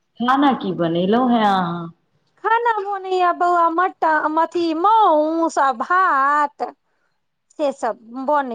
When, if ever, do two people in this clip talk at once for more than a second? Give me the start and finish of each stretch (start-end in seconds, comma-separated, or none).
none